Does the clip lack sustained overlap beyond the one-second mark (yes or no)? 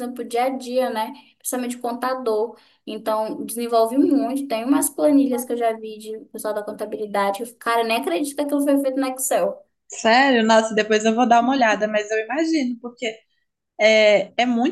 yes